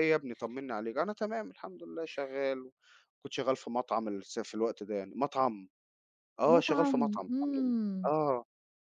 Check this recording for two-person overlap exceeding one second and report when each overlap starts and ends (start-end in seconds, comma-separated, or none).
6.5-8.1